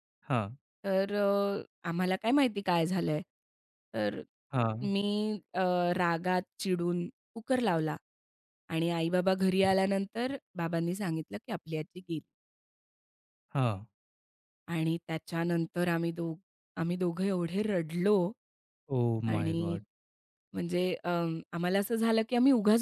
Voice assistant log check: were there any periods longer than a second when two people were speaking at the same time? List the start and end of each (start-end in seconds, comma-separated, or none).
none